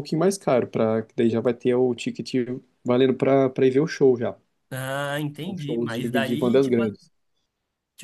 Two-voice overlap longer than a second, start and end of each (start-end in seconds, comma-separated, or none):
5.5-6.9